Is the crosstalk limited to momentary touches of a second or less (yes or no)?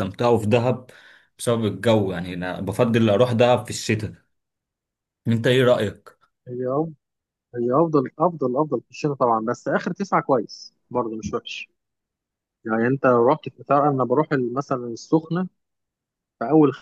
yes